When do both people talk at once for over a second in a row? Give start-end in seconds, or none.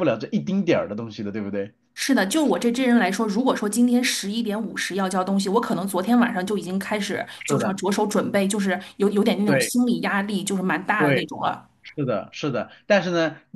none